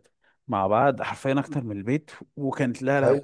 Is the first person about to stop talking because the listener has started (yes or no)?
no